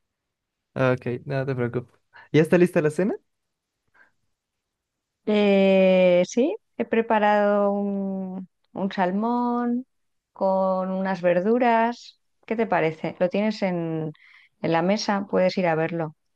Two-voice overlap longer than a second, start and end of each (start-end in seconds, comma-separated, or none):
none